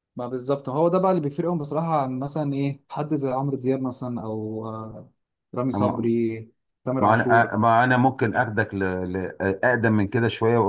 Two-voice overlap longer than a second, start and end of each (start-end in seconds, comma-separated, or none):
none